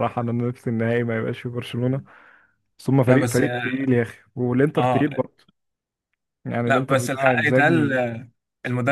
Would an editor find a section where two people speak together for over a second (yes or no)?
yes